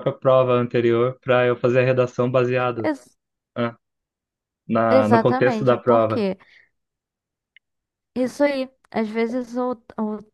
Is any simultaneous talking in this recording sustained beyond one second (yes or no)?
yes